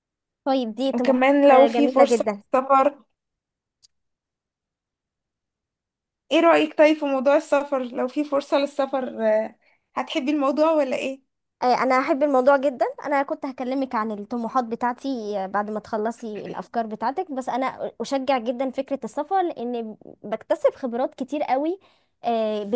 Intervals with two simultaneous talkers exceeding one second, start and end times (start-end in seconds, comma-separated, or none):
0.9-2.4